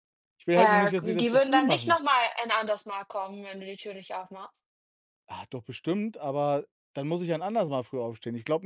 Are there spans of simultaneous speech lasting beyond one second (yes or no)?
yes